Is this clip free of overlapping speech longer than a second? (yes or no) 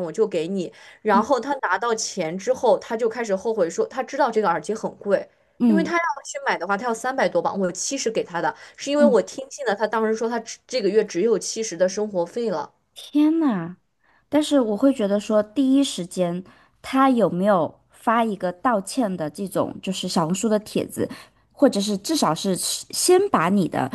yes